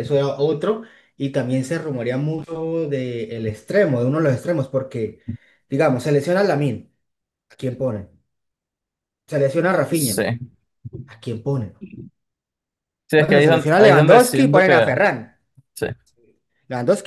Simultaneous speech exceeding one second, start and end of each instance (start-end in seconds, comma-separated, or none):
13.2-15.0